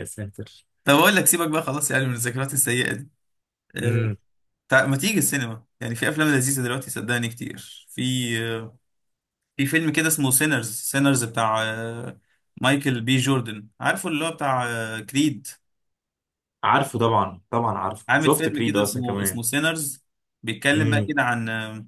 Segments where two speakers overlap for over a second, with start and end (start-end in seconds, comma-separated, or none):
18.1-19.4